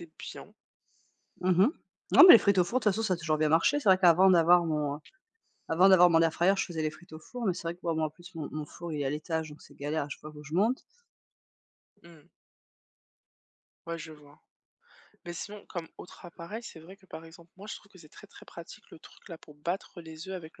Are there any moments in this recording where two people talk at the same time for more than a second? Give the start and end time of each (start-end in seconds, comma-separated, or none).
none